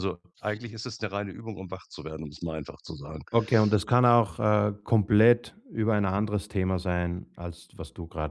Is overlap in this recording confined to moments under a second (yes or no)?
yes